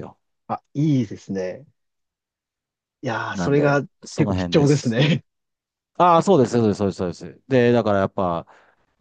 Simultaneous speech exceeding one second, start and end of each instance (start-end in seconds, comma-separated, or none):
3.3-5.0